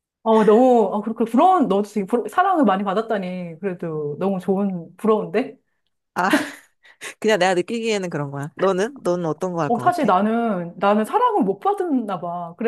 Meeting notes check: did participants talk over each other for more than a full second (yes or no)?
no